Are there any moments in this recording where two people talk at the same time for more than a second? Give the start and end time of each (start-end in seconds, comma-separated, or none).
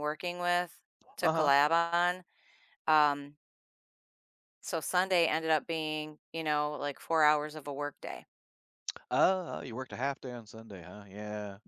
none